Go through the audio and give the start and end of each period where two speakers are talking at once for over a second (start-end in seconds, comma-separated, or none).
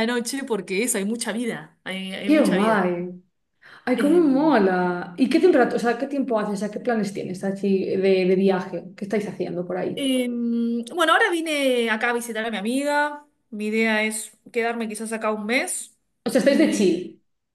none